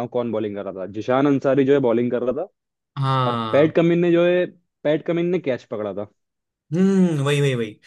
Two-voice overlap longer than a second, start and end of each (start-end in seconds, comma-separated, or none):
none